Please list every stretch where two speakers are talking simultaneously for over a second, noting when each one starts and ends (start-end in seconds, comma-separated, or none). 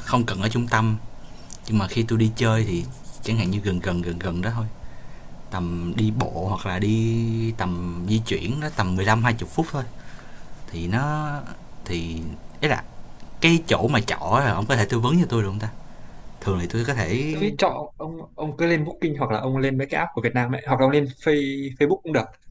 none